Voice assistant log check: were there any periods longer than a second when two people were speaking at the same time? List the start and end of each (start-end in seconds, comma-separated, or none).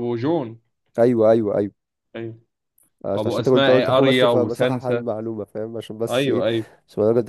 3.1-5.0